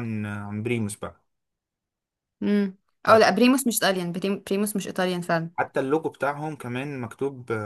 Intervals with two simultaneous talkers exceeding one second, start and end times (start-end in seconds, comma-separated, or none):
none